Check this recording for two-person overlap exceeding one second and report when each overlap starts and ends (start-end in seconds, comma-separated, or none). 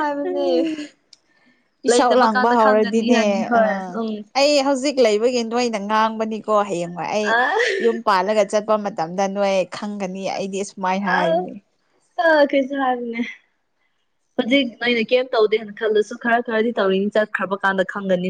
1.9-3.6